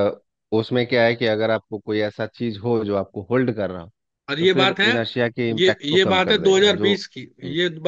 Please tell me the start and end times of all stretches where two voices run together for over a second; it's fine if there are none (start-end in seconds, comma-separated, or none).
5.6-7.0